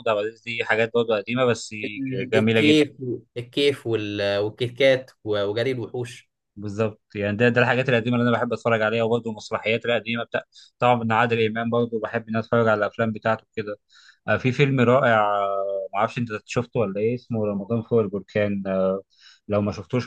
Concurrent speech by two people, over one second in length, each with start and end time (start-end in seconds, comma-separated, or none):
none